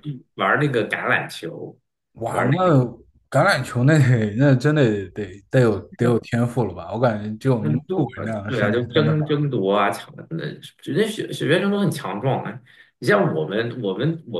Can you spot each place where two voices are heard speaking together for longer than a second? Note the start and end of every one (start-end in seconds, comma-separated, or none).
7.6-9.3